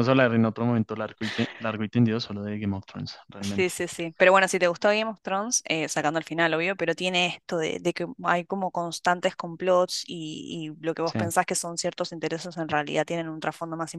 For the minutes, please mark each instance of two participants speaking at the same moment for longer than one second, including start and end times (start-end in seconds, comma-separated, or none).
none